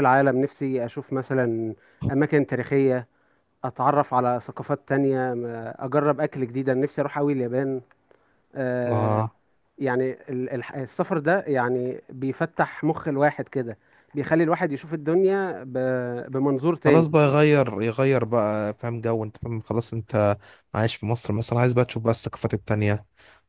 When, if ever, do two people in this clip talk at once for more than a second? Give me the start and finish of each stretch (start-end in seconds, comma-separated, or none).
none